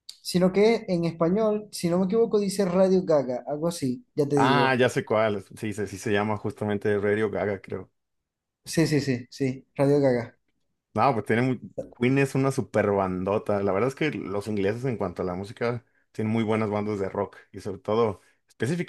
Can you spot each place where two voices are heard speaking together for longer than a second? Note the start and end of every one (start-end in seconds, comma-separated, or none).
none